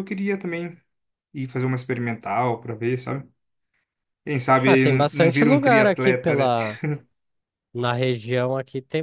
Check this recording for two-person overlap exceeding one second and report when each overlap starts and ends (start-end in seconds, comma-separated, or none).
4.7-6.5